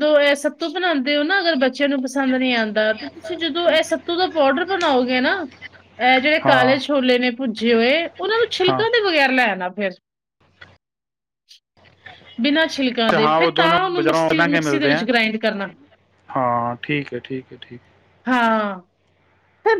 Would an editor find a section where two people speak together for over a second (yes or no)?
yes